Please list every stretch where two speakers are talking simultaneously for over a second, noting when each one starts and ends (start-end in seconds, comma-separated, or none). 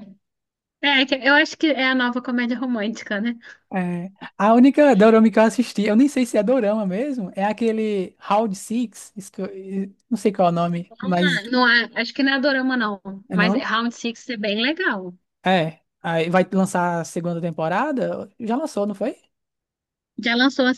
none